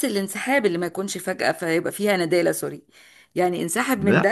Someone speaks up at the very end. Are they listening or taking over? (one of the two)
taking over